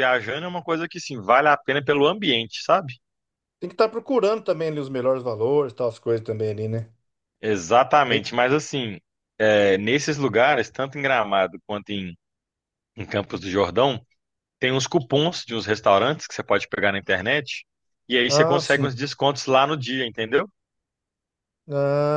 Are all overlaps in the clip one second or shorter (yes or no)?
yes